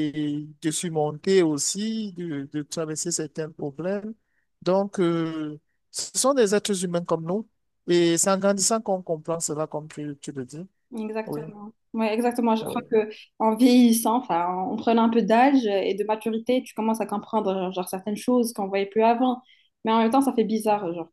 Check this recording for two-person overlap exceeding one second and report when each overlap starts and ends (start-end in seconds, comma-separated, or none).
none